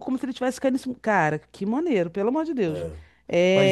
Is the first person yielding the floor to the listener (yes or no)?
yes